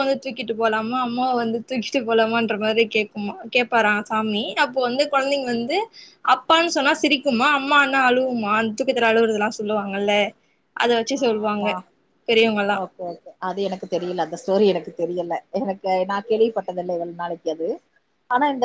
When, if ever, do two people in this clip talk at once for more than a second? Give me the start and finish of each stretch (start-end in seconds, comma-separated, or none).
none